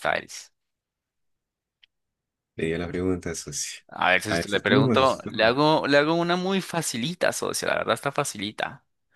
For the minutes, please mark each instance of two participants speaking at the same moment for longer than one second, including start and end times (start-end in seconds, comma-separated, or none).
4.3-5.6